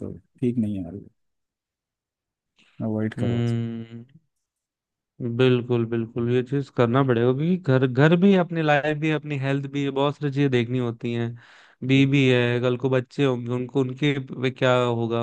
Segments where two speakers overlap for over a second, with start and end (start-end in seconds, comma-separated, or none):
none